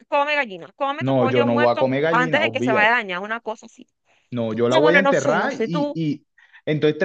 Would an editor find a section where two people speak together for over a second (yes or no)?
yes